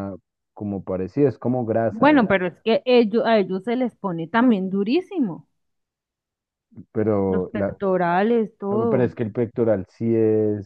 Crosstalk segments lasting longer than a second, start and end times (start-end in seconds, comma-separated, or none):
none